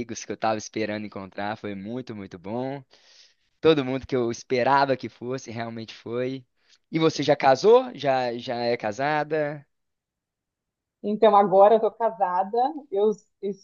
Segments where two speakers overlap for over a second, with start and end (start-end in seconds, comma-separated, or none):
none